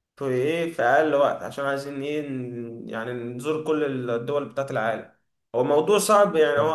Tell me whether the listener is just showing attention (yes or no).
yes